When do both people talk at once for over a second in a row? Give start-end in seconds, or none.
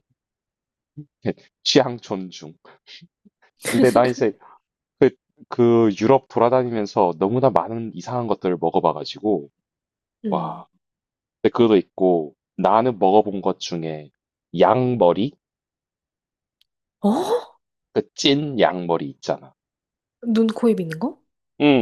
none